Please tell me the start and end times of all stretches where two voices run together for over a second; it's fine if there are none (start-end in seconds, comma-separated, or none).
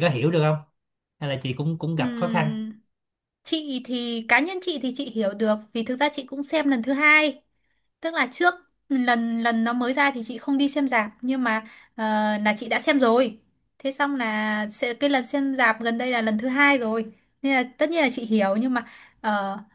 none